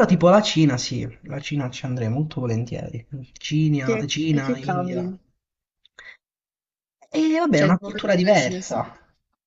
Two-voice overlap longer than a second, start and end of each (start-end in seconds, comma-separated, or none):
3.8-5.1, 7.5-8.8